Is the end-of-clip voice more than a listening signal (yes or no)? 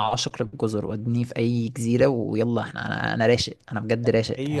yes